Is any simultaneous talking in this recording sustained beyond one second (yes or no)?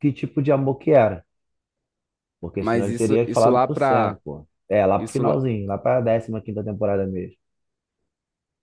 yes